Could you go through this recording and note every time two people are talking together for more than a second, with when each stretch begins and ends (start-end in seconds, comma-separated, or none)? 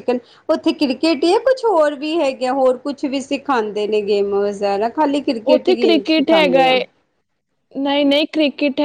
5.5-6.8